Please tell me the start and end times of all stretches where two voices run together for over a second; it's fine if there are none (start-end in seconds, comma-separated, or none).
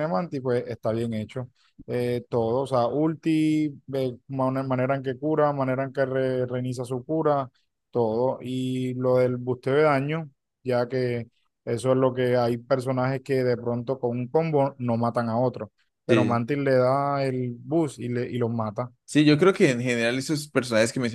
none